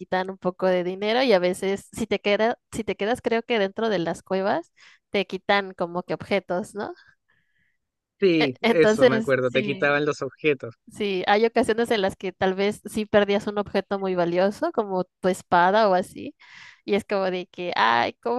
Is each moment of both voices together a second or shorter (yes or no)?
no